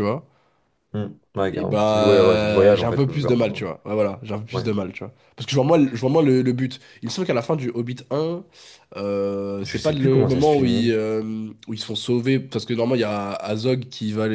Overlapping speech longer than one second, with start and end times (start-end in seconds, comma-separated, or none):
1.5-3.6, 9.6-10.9